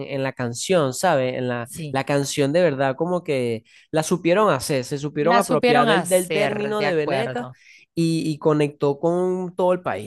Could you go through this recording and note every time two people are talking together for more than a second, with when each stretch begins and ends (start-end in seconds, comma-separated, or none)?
5.2-7.5